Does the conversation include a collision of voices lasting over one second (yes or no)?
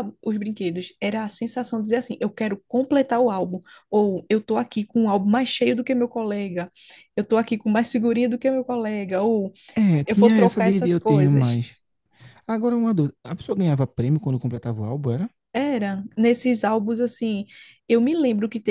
yes